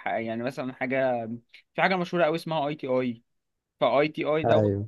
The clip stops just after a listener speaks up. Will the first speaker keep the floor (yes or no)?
yes